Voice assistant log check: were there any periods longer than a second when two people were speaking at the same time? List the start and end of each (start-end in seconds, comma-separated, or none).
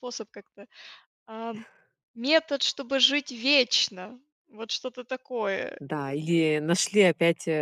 none